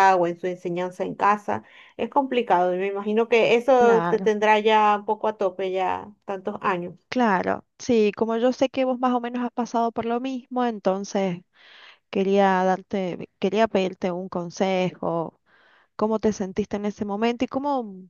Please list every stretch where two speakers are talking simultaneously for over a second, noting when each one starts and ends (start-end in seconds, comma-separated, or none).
none